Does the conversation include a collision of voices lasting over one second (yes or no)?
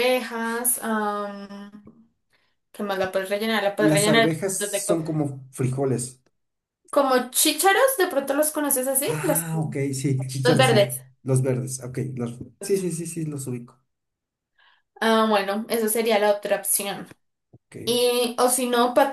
yes